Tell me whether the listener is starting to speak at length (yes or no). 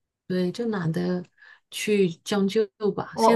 yes